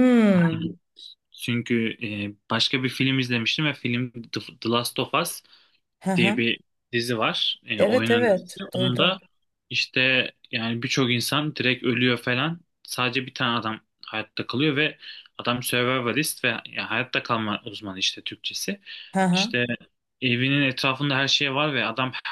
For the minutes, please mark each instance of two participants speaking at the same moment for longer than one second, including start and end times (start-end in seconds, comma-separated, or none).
7.8-9.2